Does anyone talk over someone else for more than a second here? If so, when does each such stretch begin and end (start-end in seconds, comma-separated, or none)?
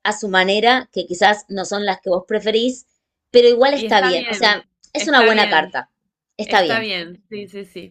3.7-5.8